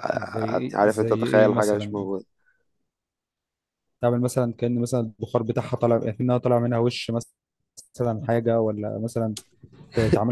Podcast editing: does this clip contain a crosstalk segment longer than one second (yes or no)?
yes